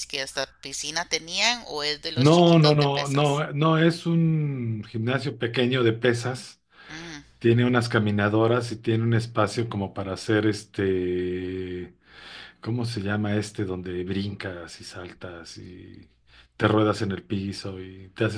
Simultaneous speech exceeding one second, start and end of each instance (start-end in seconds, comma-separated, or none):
2.1-3.4